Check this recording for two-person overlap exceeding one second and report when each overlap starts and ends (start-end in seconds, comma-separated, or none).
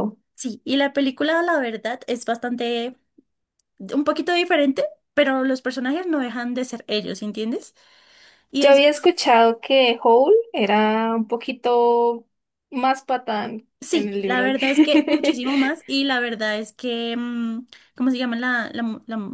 13.8-15.4